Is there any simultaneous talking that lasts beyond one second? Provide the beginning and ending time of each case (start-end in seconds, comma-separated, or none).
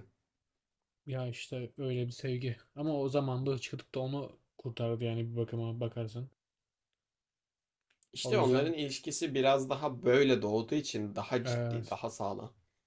none